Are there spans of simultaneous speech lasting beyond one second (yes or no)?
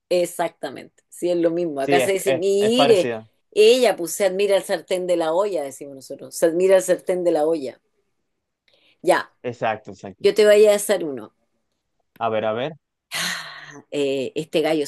yes